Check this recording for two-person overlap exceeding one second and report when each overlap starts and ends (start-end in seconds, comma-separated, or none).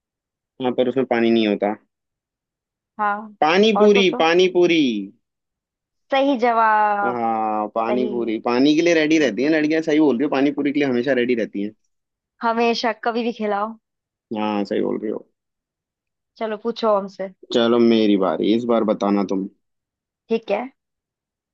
none